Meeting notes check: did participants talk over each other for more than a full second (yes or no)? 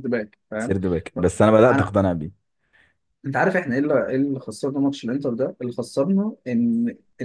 no